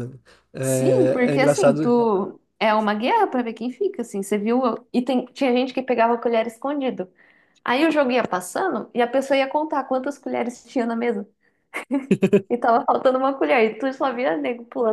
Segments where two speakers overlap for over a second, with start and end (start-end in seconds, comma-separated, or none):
0.6-1.9